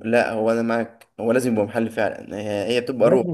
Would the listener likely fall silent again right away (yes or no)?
yes